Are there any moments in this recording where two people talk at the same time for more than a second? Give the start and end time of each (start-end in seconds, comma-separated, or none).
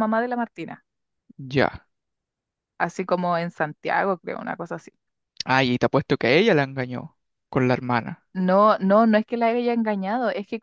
none